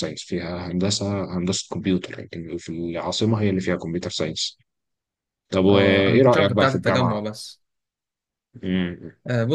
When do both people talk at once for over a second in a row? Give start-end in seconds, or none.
5.7-7.2